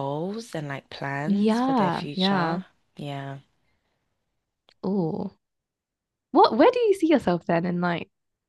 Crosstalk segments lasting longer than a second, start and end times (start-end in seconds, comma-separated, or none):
1.3-2.6